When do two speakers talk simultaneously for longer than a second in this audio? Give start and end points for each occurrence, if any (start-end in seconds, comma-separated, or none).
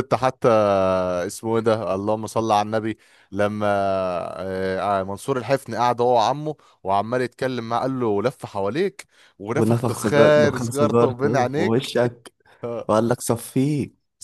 9.5-11.9